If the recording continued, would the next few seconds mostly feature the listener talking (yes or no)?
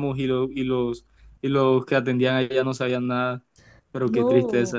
yes